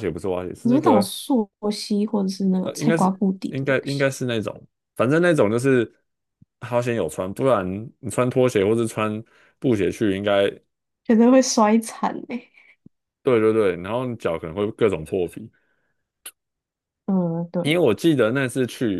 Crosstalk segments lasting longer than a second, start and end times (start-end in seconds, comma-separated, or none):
2.6-4.1